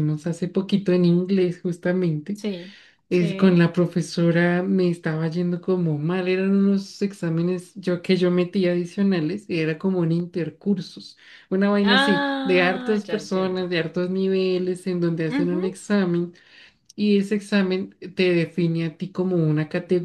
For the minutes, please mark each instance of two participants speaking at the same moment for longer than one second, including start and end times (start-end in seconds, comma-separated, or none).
11.8-13.7